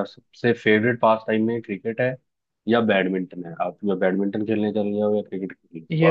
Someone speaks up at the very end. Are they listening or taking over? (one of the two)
taking over